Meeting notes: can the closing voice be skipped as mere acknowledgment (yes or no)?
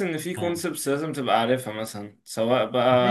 no